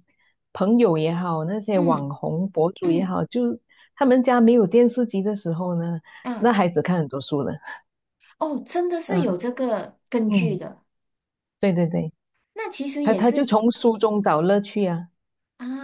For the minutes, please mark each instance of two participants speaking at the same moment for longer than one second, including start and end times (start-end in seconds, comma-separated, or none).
none